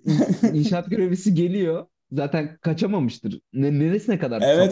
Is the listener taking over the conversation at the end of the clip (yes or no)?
yes